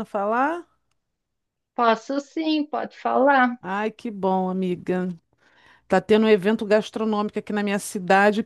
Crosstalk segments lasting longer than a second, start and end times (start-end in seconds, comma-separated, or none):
none